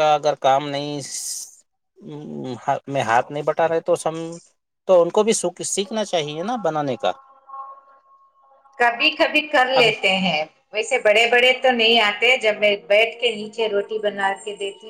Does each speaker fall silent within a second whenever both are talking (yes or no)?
yes